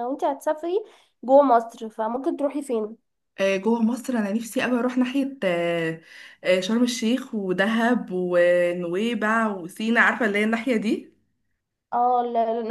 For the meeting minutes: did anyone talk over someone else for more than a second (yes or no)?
no